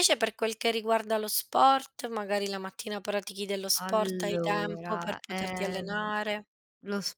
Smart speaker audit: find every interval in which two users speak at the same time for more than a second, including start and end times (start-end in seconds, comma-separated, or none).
3.8-6.1